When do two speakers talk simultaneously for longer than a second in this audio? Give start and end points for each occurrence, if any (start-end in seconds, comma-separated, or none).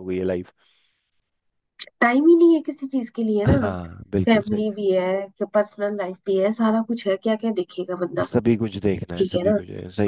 none